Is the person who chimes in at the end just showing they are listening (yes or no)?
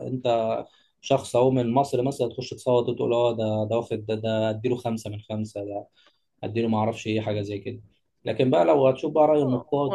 no